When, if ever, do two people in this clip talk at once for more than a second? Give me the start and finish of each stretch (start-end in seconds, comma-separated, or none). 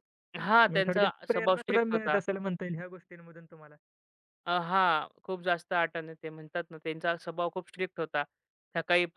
0.7-2.2